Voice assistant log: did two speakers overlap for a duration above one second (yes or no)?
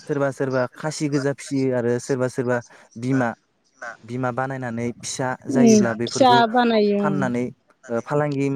yes